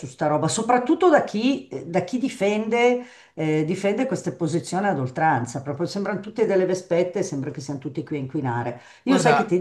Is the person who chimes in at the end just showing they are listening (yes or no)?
yes